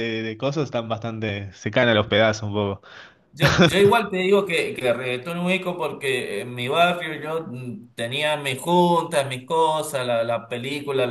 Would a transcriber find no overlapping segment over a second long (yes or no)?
yes